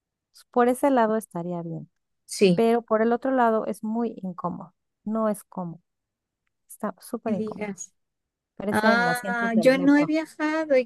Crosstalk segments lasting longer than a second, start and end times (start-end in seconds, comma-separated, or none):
8.7-10.1